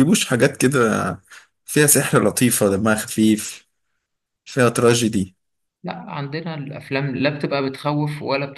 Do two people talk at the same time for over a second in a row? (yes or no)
no